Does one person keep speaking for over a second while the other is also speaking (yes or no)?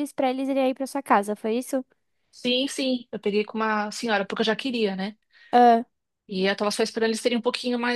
no